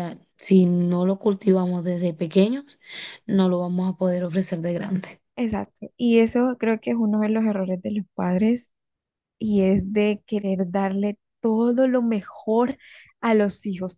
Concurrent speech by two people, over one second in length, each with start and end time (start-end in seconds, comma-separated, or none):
none